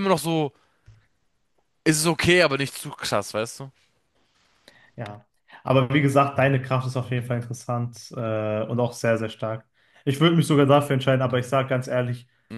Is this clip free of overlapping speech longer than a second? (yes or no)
yes